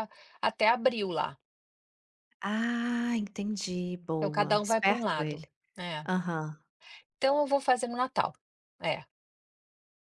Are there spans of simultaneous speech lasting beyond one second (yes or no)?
yes